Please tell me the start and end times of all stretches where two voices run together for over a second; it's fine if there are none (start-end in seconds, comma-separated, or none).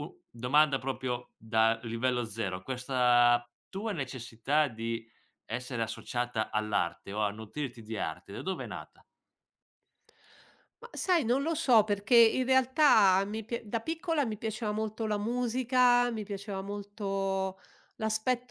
none